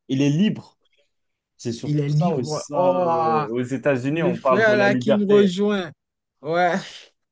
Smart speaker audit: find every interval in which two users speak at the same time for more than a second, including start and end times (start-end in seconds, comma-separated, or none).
1.8-3.4, 4.1-5.6